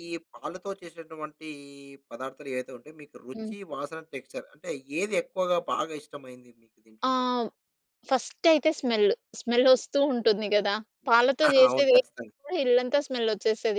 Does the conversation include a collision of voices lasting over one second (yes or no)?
no